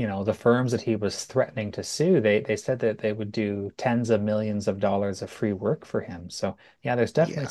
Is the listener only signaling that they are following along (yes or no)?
yes